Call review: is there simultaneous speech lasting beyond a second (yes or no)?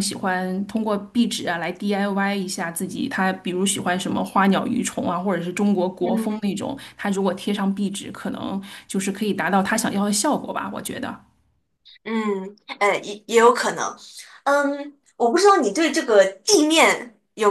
no